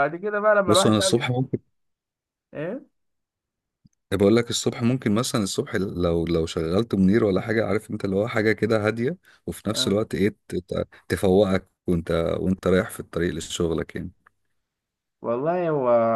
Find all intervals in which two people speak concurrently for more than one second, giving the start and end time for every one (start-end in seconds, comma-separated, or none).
none